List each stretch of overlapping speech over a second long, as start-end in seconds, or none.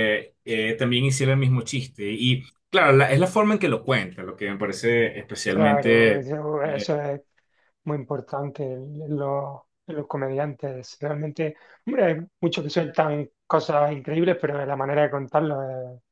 5.5-7.0